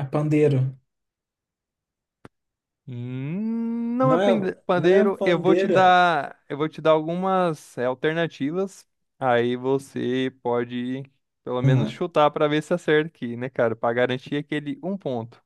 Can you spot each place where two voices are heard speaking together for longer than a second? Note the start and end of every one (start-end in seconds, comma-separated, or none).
4.0-6.0